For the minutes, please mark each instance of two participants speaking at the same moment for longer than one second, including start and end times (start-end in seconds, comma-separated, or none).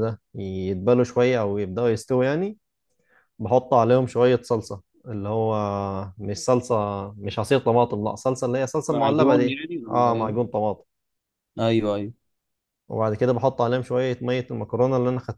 8.9-10.5